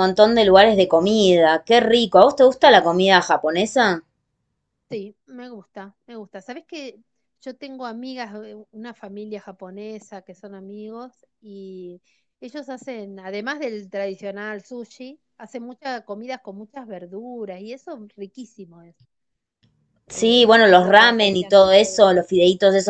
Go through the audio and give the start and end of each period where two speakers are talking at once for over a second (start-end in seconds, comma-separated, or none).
20.1-21.7